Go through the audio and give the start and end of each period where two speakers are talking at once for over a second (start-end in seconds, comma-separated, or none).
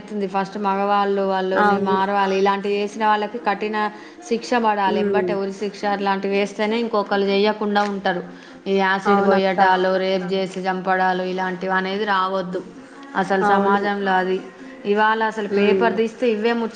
none